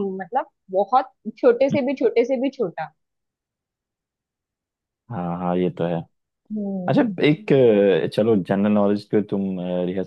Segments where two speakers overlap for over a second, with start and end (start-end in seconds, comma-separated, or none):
none